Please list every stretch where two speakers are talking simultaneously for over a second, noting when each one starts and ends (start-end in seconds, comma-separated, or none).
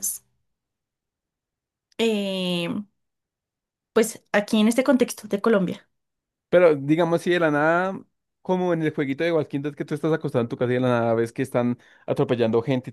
none